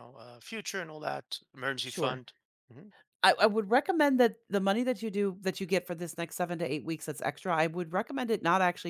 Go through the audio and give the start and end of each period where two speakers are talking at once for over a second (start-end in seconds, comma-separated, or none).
none